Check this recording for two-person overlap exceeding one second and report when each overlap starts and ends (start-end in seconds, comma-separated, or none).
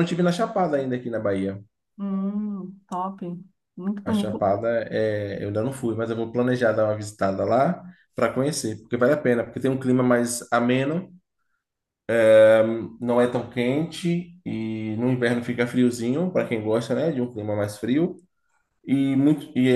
none